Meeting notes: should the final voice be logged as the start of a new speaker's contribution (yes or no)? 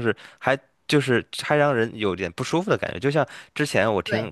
no